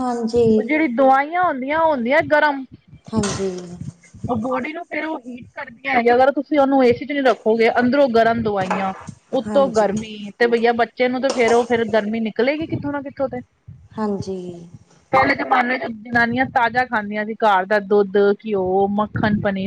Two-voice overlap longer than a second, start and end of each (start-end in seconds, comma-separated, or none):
none